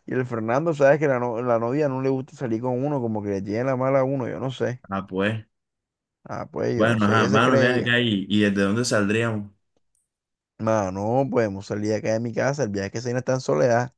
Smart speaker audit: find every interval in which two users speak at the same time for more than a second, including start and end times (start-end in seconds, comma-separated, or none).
6.8-8.0